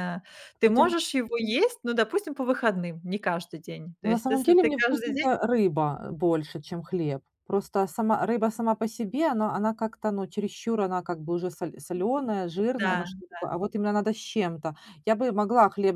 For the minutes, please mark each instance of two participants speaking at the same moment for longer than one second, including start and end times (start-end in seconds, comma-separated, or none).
4.0-5.3